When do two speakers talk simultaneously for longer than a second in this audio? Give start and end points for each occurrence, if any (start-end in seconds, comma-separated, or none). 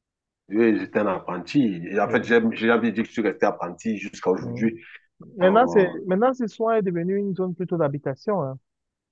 none